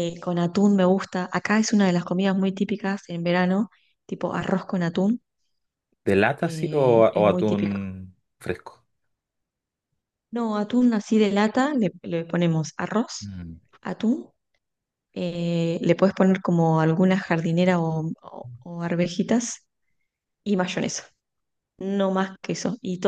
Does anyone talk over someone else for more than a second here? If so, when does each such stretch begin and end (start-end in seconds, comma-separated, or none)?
6.4-7.9